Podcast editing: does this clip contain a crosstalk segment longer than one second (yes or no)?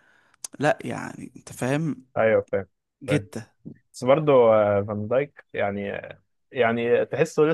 no